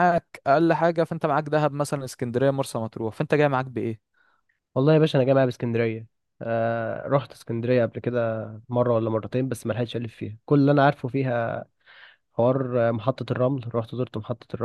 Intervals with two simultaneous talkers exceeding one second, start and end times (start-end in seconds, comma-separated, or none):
none